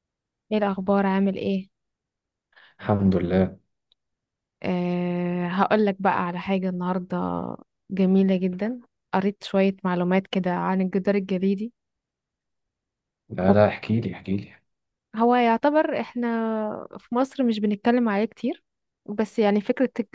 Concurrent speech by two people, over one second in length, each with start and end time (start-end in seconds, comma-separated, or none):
none